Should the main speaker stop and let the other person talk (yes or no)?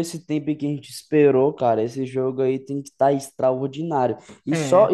no